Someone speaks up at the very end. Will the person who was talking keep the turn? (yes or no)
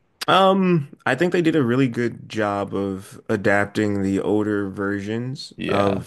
yes